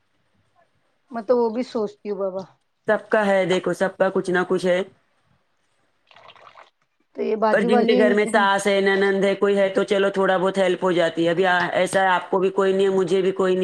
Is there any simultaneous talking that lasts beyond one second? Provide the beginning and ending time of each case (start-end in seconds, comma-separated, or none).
none